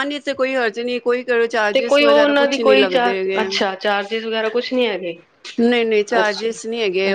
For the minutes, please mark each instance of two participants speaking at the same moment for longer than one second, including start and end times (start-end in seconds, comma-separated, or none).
1.7-3.5